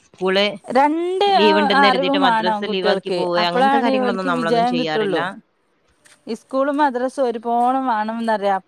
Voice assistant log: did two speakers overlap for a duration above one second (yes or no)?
yes